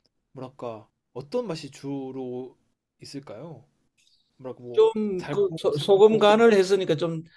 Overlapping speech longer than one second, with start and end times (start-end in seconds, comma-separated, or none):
4.7-6.3